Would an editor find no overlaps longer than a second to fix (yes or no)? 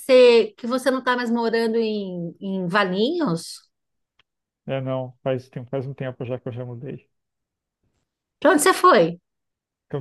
yes